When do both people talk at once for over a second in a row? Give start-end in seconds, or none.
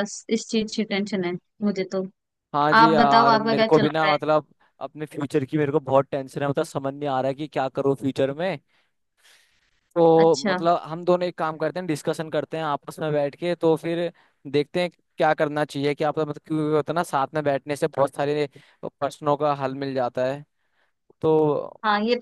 2.8-4.2